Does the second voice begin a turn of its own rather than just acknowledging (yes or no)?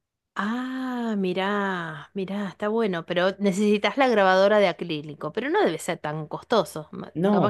yes